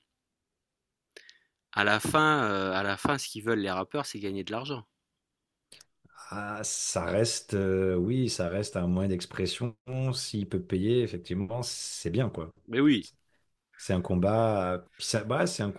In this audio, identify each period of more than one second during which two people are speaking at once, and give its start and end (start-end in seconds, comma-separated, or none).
none